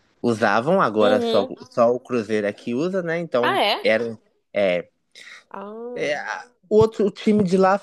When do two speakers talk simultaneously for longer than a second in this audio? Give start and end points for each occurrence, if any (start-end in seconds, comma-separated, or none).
none